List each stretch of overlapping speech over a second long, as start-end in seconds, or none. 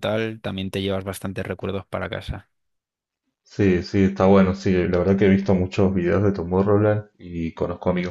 none